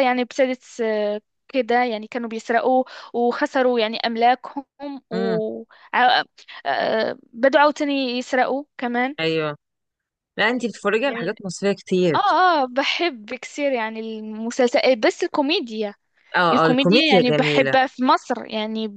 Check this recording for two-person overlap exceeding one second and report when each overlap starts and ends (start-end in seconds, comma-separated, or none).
16.5-17.7